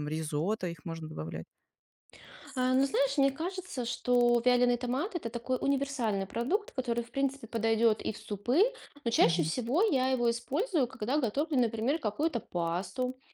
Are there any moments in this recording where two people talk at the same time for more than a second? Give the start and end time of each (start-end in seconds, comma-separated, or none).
none